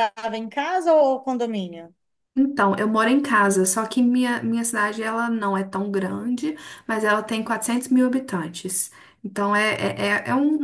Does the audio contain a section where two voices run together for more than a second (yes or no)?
no